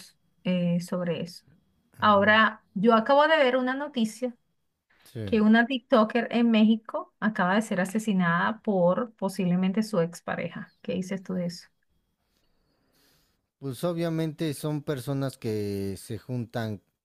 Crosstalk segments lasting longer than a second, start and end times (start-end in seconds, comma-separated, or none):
none